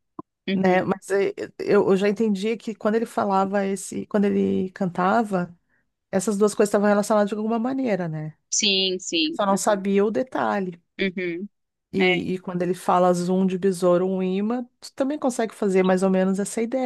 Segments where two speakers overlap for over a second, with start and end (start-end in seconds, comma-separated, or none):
none